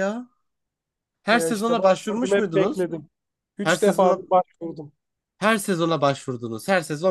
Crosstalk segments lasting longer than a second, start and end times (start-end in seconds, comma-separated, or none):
1.3-2.8